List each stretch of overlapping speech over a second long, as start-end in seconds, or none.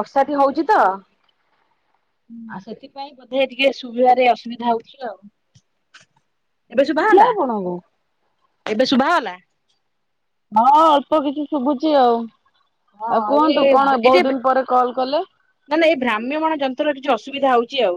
none